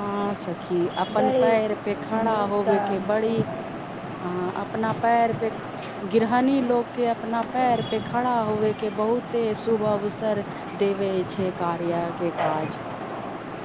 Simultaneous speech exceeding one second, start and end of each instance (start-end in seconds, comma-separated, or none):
1.2-3.4